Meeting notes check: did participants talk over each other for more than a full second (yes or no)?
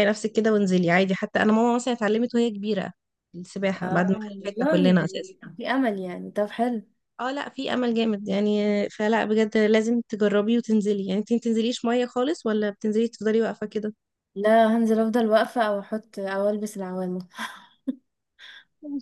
yes